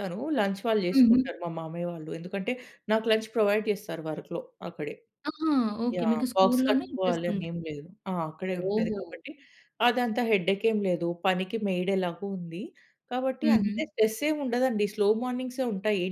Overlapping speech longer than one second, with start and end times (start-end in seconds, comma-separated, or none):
6.0-7.5